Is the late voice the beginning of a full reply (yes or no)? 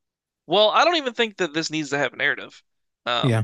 no